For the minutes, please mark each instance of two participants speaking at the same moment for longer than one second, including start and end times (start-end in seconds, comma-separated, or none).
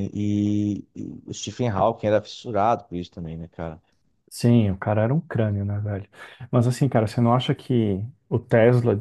none